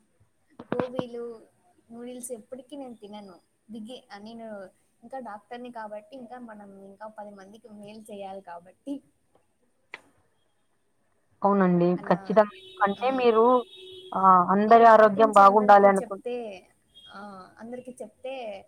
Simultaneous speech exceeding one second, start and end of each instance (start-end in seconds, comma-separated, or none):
14.7-16.1